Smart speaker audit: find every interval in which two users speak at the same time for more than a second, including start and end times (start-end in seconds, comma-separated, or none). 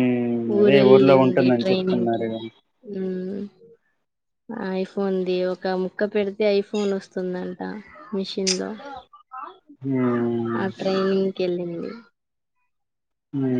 0.6-2.3